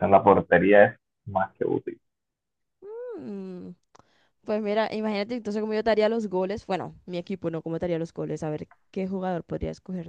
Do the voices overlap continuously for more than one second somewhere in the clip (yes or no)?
no